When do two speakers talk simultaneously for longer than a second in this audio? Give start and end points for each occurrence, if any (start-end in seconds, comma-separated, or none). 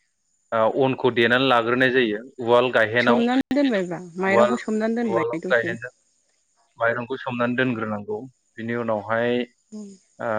4.3-5.7